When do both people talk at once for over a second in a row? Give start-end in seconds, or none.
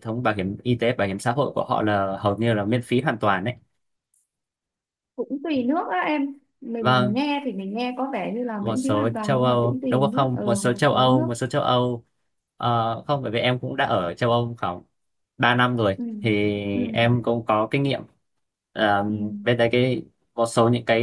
8.6-11.3